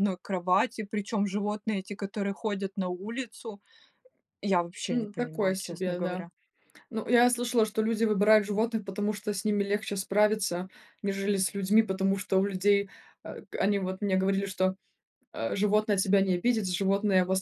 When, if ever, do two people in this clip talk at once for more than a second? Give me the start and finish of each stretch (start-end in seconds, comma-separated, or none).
4.9-6.2